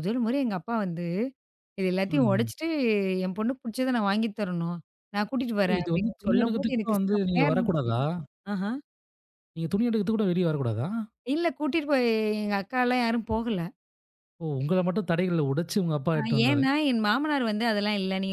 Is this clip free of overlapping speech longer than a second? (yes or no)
no